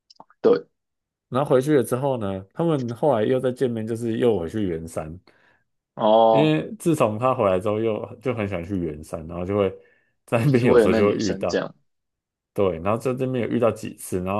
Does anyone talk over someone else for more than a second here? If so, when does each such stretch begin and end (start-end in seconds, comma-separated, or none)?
10.5-11.7